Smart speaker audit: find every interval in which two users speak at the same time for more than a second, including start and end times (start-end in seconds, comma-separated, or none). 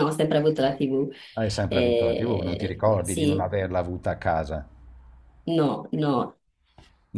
1.7-3.4